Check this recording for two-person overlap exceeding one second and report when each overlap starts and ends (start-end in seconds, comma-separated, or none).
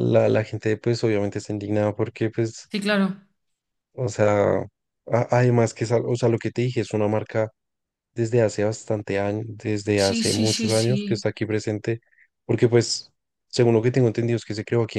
9.9-11.2